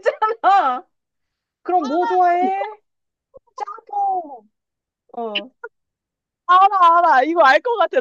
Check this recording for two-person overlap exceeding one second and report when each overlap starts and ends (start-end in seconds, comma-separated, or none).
none